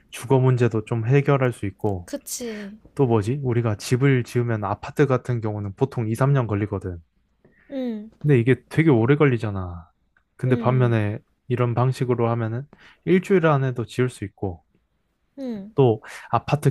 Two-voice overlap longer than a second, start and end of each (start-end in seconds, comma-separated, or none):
none